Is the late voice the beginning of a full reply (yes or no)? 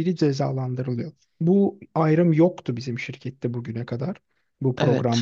yes